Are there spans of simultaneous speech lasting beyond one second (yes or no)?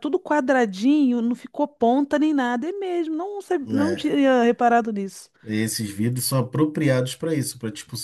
no